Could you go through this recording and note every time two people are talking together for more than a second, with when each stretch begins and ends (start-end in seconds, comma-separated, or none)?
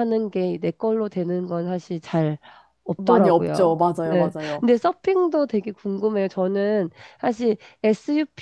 3.0-4.7